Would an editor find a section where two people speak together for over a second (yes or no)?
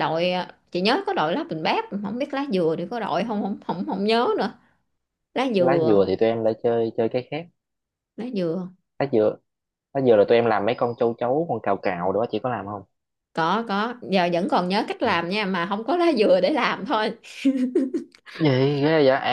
no